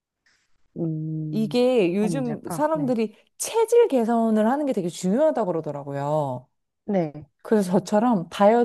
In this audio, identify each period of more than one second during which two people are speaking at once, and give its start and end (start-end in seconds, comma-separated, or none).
1.3-3.0